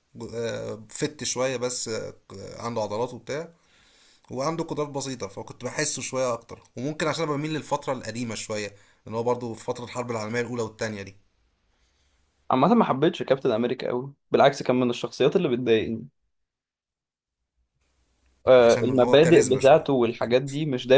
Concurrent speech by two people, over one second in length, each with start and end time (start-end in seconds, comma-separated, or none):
18.6-19.8